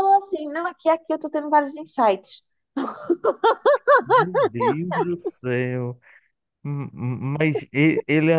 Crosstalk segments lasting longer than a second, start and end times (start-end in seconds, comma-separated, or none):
none